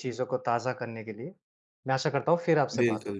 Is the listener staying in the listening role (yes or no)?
no